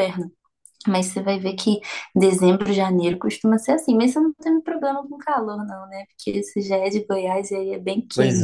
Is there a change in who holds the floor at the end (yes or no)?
yes